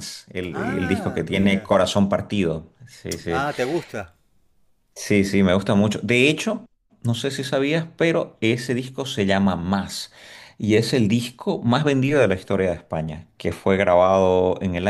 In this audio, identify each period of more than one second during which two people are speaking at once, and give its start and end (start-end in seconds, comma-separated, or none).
0.5-1.7